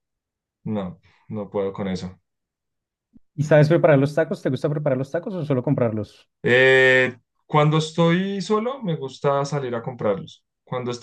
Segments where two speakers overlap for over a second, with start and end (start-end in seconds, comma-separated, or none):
none